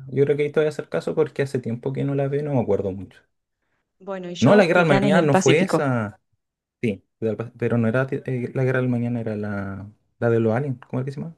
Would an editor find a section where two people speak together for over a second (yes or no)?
yes